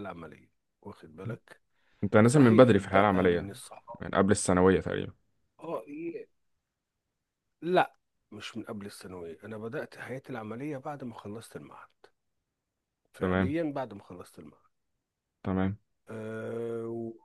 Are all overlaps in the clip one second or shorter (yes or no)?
no